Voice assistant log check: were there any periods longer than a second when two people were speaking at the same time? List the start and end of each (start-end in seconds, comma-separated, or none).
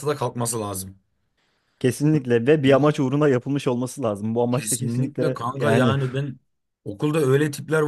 4.5-6.0